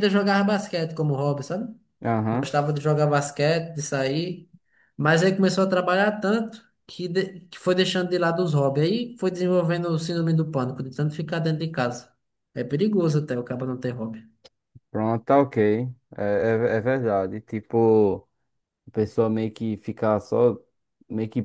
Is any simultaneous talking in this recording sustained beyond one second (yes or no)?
no